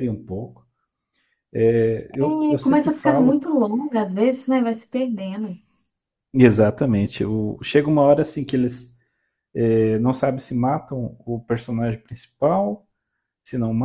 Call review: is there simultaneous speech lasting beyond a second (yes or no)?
yes